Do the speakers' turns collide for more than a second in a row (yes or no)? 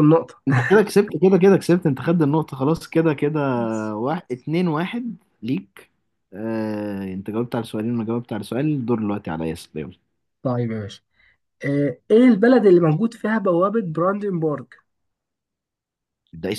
no